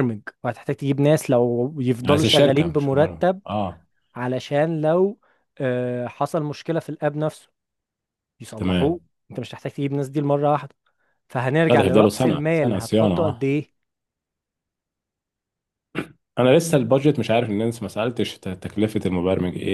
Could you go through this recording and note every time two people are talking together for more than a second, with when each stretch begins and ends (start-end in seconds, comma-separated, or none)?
2.0-3.4, 11.7-13.5